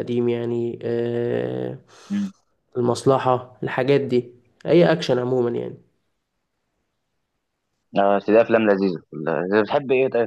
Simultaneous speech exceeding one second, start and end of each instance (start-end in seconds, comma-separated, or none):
none